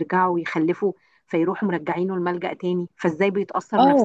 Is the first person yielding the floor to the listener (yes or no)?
yes